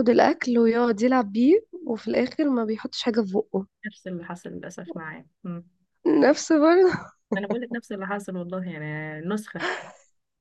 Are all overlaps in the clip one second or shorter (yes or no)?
yes